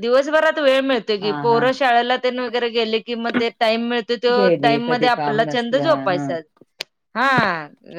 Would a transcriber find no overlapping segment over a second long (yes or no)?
no